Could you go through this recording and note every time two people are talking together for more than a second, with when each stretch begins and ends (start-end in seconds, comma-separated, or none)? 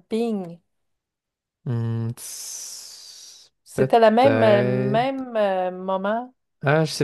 3.6-5.2